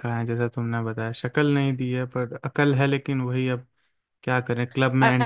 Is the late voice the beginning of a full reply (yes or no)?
yes